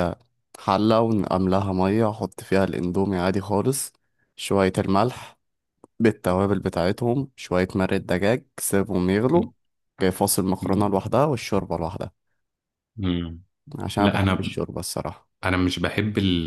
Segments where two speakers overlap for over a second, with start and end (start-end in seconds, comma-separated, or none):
none